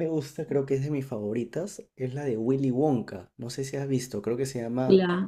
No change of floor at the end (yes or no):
no